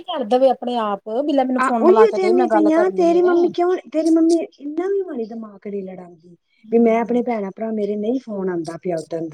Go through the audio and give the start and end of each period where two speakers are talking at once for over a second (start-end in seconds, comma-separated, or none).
1.6-3.3